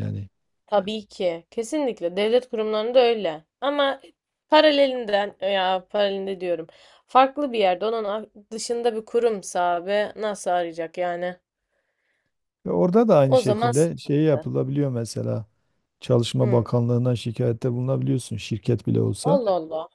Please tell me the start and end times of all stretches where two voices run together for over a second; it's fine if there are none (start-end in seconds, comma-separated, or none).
13.3-14.5